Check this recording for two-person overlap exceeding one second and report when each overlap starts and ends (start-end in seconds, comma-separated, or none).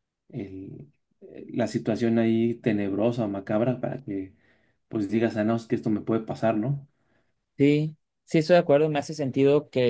none